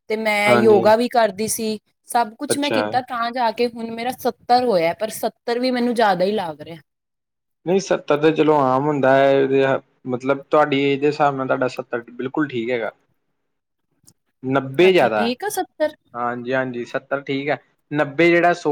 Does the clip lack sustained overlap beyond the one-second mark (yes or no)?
yes